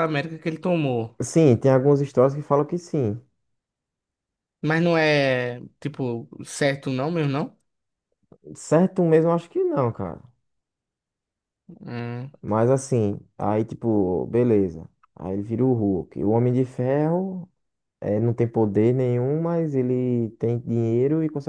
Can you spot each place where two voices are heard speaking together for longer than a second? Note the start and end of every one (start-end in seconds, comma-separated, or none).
none